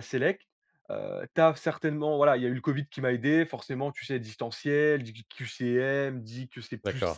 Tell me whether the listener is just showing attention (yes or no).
yes